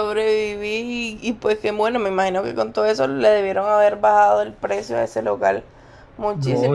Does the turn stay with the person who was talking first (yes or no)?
no